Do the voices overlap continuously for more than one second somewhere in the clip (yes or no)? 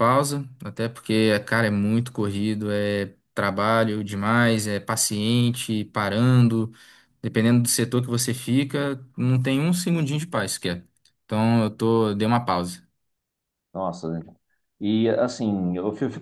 no